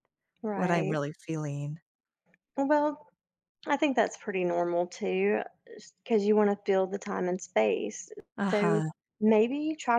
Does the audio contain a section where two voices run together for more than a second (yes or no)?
no